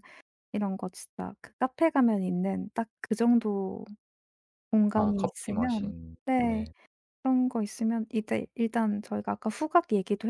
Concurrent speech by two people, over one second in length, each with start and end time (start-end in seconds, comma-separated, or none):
4.9-6.6